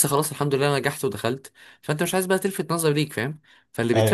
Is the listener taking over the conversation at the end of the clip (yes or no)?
no